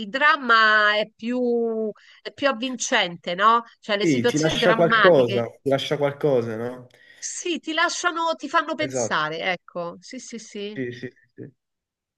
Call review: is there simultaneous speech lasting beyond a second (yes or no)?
yes